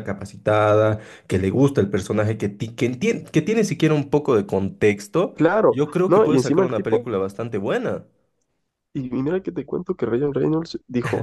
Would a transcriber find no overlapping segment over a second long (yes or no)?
no